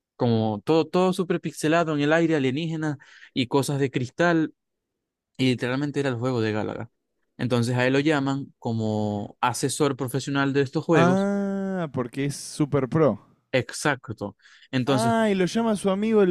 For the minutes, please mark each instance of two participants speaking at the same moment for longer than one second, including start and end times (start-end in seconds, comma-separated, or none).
none